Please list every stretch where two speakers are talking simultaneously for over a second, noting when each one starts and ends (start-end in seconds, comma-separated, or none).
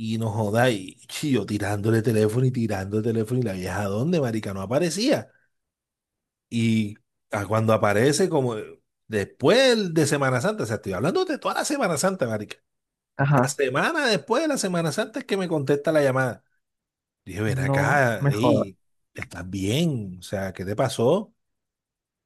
17.4-18.7